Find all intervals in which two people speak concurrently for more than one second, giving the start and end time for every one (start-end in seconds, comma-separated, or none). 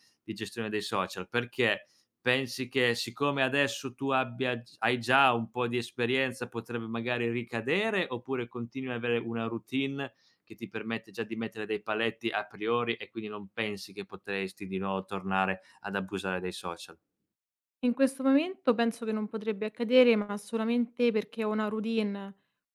none